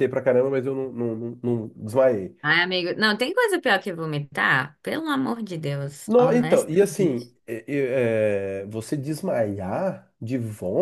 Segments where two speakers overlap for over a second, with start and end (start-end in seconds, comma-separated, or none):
6.1-7.3